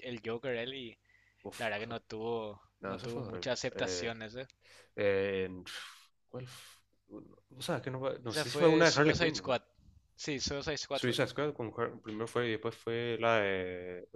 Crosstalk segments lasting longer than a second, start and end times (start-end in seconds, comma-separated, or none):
2.8-4.2, 8.3-9.6